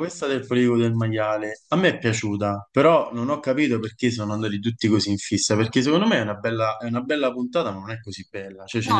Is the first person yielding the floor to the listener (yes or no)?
no